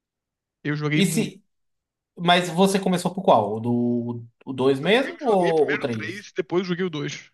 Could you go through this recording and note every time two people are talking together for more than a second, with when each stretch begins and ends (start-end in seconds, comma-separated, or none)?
4.8-6.3